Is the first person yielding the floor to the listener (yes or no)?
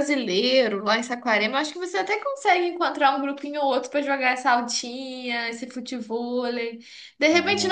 no